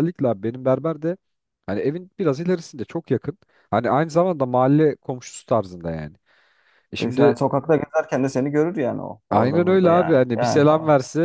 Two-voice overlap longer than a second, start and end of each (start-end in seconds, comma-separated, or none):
9.3-10.6